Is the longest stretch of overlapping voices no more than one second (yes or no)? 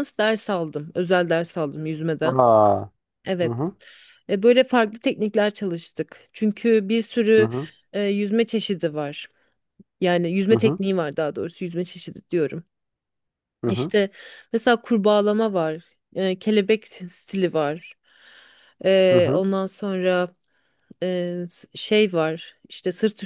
yes